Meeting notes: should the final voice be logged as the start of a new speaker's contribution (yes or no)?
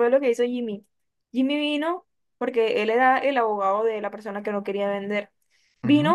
no